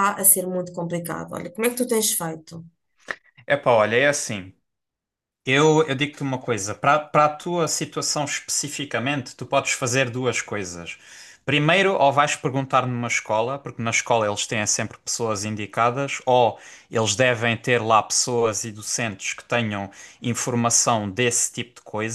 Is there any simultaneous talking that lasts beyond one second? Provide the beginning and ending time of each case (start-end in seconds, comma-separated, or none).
none